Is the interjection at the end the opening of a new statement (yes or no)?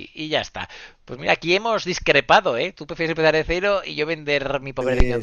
yes